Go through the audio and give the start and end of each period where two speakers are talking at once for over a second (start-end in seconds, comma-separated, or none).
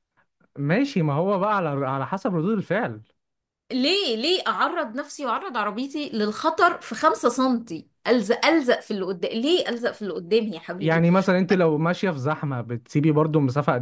none